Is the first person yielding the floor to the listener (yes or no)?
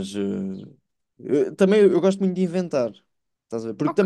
no